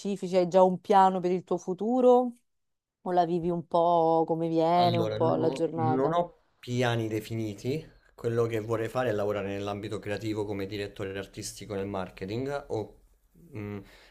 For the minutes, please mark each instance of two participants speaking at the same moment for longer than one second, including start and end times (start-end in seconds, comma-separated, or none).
4.7-6.2